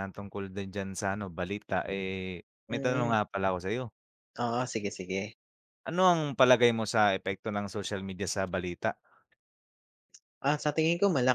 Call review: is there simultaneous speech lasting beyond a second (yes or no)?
no